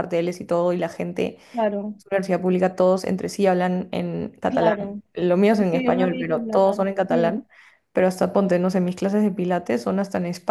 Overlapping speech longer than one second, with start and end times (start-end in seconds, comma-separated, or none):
5.6-7.4